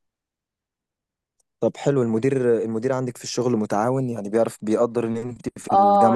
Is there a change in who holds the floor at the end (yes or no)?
yes